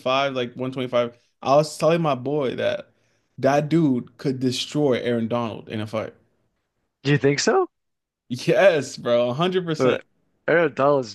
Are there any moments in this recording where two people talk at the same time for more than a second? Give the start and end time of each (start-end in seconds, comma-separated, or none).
none